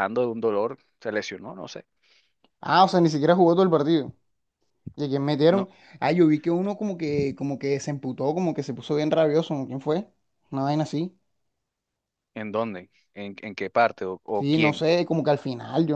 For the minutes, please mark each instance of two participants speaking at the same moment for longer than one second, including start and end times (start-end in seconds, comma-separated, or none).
none